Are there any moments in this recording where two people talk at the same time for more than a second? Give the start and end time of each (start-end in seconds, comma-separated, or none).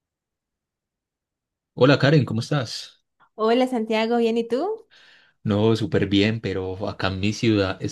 none